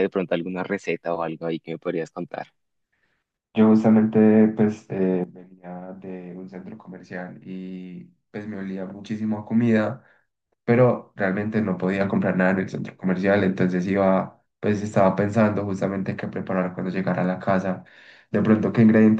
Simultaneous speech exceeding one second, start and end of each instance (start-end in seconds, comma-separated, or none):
none